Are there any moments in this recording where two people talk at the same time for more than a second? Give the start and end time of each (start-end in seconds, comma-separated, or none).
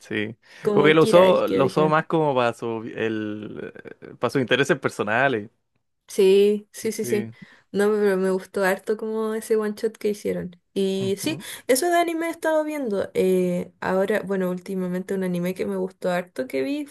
0.6-2.0